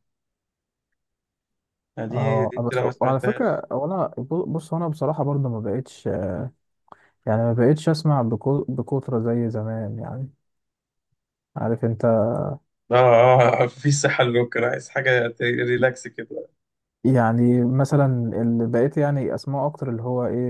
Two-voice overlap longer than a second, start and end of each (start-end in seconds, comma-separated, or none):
2.1-3.6